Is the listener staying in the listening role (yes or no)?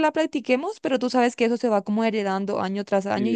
no